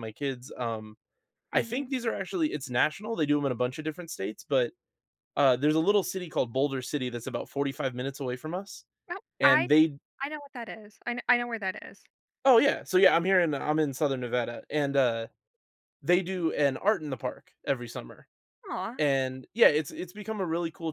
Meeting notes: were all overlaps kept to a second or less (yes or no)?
yes